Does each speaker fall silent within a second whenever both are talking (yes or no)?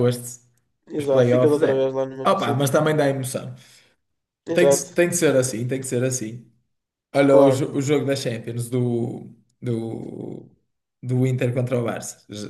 no